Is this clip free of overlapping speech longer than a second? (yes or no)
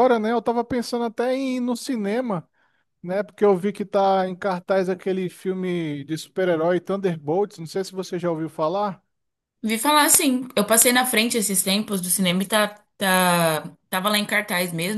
yes